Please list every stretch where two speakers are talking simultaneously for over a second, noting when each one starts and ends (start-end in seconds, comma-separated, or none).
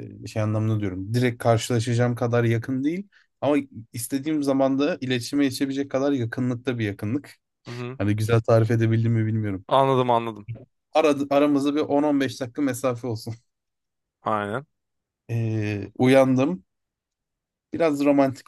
none